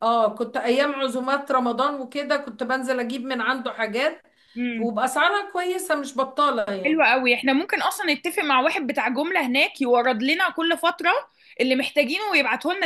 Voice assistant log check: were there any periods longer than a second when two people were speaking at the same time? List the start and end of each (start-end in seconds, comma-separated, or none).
none